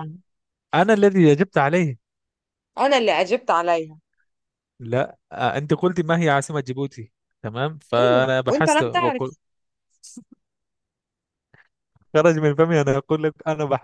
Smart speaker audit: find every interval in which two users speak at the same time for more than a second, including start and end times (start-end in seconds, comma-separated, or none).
7.9-9.3